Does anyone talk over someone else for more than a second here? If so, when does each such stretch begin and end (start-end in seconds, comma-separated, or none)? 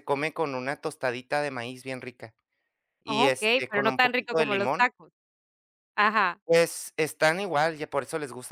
3.2-4.9